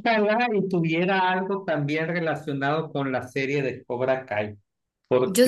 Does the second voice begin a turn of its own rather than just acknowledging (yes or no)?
yes